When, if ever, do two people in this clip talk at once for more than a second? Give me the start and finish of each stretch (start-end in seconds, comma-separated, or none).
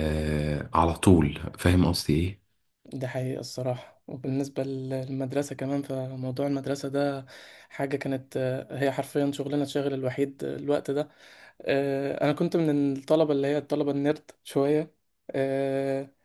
none